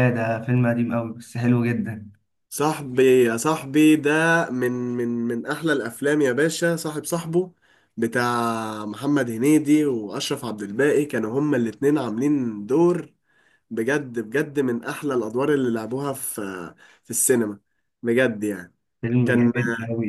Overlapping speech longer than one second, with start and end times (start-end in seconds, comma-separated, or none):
none